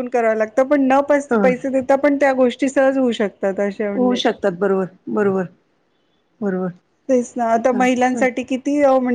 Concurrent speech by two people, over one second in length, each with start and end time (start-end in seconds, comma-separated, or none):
none